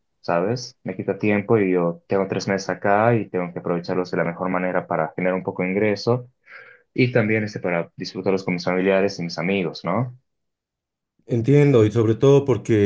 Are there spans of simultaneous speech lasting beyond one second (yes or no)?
no